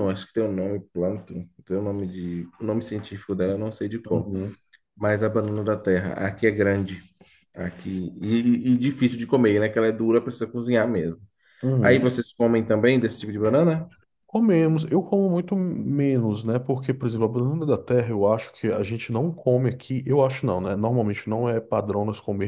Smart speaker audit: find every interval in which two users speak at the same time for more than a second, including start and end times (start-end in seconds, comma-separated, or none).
none